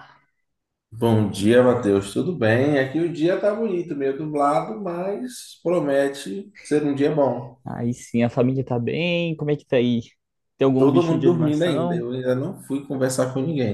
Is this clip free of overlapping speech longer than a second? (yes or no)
no